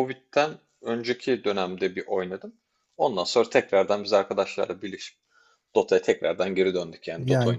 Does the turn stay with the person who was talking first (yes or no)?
no